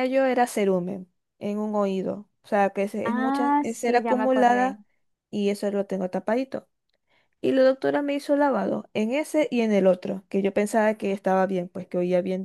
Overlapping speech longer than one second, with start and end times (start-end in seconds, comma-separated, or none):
3.0-4.8